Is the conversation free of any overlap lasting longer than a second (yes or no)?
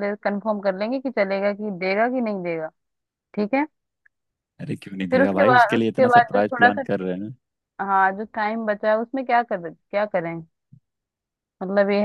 no